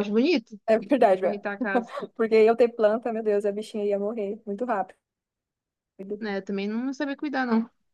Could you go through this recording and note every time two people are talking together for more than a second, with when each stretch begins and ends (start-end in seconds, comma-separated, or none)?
none